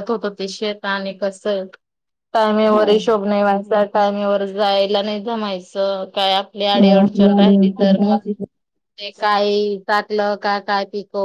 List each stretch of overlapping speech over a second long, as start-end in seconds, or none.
6.8-8.2